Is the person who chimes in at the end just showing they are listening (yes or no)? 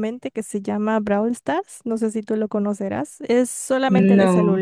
yes